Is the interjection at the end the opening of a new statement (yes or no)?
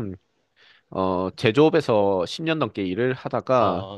no